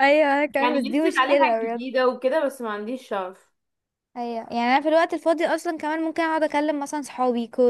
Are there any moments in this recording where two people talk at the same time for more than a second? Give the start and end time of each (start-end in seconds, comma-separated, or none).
0.6-1.9